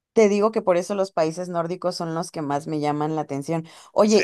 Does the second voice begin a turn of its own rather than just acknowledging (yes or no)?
no